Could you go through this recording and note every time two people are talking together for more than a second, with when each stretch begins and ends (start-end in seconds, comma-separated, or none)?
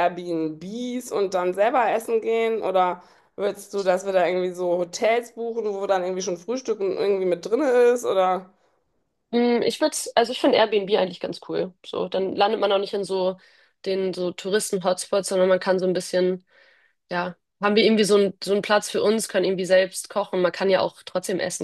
none